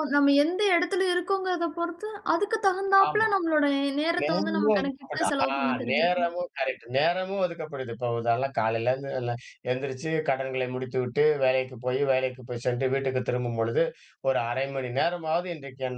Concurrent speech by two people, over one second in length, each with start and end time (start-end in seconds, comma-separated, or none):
4.2-6.3